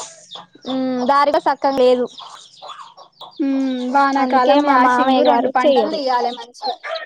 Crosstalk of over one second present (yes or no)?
yes